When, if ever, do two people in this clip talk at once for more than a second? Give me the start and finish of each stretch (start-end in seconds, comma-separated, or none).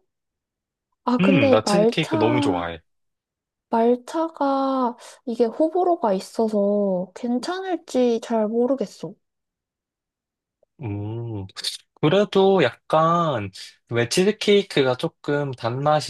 1.2-2.7